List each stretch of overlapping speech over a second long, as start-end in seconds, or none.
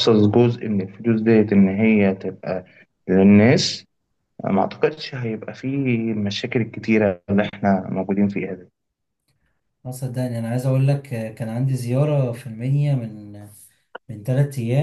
none